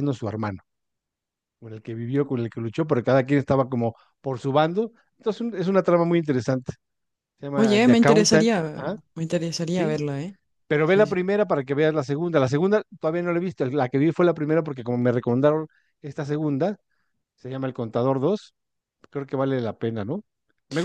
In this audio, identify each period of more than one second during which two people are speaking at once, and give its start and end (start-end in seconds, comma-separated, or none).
7.6-9.0